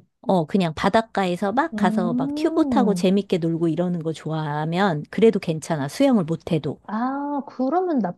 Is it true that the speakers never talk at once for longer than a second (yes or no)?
no